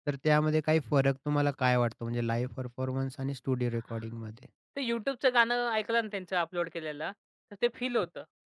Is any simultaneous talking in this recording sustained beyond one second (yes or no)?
no